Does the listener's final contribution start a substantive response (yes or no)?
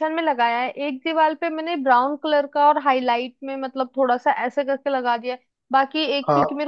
no